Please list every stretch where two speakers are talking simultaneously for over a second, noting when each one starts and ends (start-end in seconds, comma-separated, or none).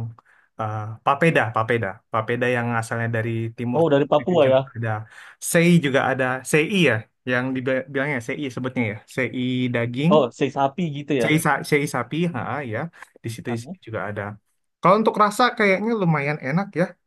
none